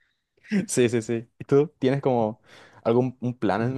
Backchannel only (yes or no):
no